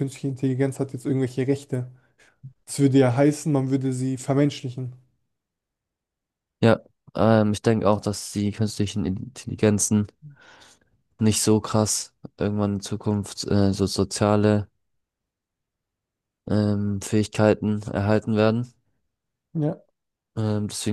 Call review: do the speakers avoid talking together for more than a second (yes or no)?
yes